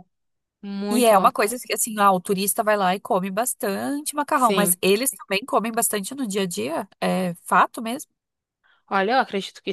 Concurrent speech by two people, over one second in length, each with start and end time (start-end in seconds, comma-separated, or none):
none